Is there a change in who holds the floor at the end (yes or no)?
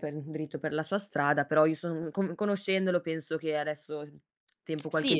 yes